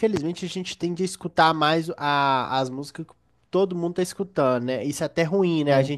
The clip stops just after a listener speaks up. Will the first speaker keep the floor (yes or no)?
yes